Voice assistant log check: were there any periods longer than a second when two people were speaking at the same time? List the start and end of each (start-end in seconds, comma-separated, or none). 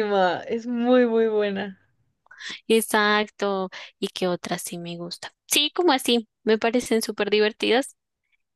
none